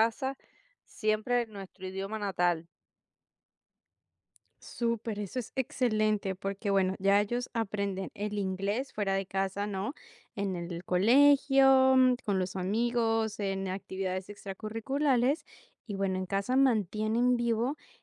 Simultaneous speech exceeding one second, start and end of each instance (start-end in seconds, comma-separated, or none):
none